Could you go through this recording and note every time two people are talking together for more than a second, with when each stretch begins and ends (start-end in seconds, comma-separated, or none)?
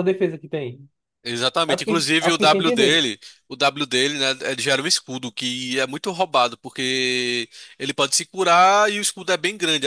1.7-3.0